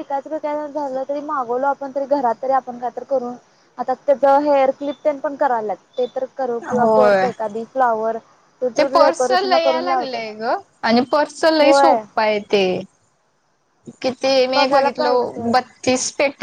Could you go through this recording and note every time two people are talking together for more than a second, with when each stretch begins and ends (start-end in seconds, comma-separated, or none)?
8.8-10.2